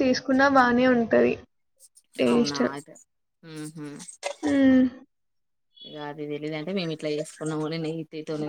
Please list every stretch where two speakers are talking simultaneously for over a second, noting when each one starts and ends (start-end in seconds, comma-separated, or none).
none